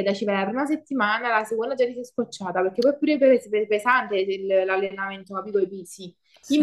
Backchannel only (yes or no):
yes